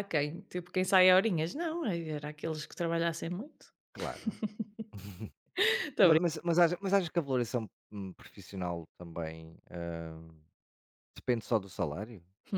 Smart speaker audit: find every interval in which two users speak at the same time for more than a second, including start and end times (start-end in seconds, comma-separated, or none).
none